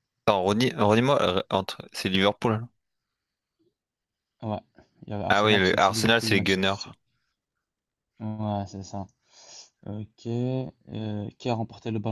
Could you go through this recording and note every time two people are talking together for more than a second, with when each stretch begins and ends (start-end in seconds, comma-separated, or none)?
5.3-6.8